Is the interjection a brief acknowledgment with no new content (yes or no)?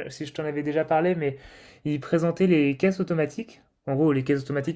yes